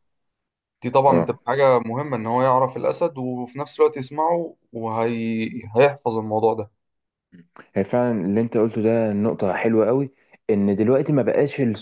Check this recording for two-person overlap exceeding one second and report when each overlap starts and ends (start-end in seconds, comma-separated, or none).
none